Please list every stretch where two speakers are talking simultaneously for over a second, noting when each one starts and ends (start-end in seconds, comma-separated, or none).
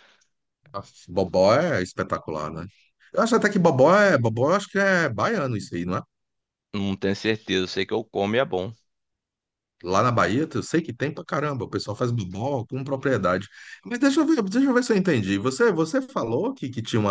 none